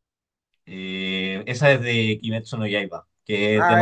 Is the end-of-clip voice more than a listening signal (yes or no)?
yes